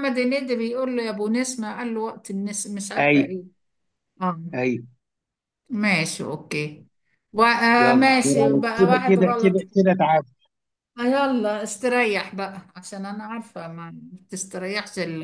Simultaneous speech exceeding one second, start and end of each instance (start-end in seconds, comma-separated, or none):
7.8-9.6